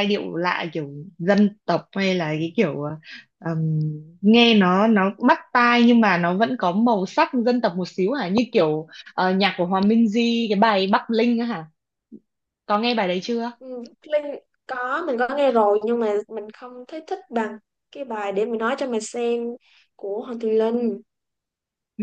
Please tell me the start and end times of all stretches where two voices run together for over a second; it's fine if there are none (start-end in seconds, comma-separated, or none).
none